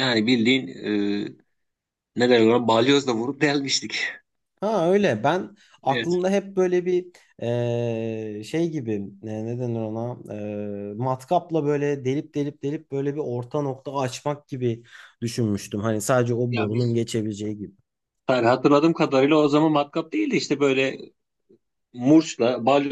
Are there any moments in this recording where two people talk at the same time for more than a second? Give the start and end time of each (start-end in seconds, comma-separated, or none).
none